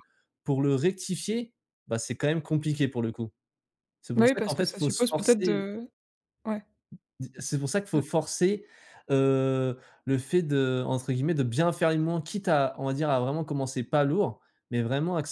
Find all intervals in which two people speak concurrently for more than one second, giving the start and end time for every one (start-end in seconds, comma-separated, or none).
4.1-5.7